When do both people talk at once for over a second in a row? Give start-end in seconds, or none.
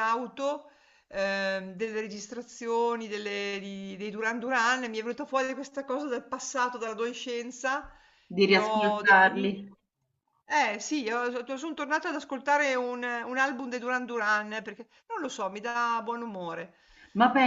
8.4-9.6